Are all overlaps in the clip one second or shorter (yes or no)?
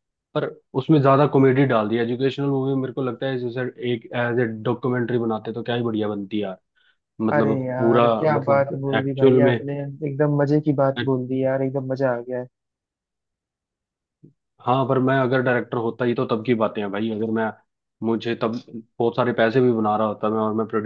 no